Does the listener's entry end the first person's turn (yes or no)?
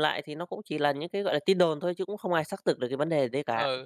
yes